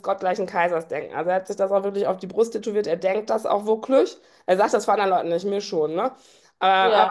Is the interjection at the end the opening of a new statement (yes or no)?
no